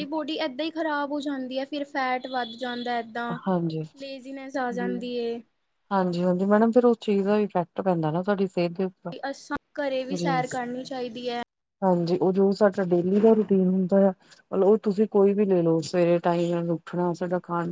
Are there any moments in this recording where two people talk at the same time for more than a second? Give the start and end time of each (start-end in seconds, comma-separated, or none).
none